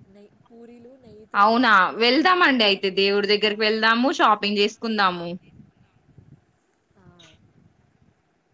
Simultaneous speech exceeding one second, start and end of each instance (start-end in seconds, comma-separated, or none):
1.4-3.5